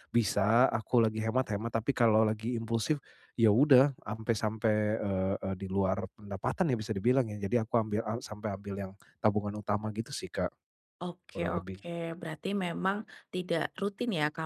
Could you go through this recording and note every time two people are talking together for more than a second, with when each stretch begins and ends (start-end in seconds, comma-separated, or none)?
none